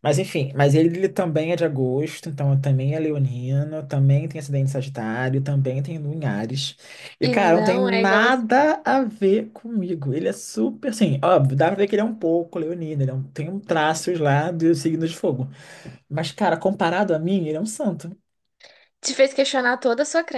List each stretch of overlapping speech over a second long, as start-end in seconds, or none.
7.2-8.4